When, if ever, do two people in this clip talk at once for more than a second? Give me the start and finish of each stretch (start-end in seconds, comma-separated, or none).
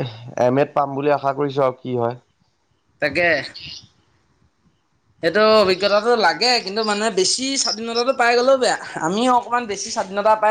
none